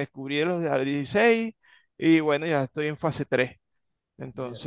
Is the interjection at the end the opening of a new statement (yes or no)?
no